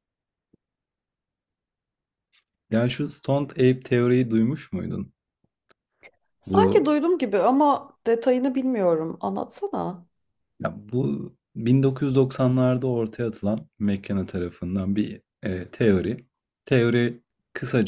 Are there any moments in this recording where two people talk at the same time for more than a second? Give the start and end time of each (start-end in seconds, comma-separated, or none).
none